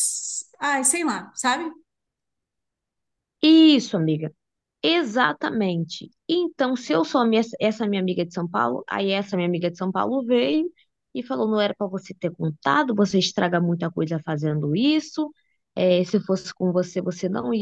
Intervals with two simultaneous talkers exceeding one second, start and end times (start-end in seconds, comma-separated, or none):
none